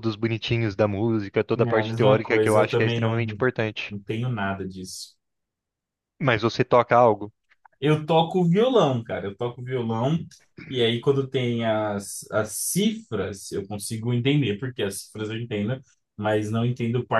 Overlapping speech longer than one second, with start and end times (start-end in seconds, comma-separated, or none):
1.6-3.2